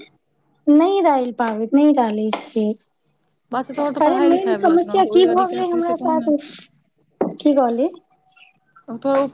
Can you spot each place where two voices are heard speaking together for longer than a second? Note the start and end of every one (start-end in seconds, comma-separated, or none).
4.0-6.3